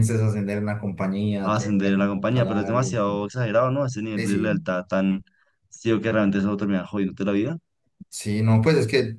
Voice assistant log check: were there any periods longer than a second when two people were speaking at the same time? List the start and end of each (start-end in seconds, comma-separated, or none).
1.4-3.0